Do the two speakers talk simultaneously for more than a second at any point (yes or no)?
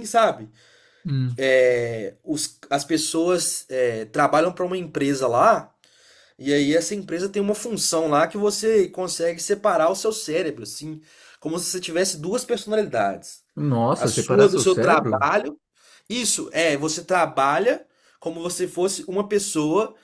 yes